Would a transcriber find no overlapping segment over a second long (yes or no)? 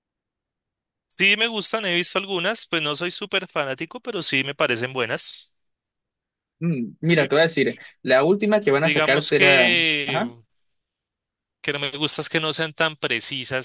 no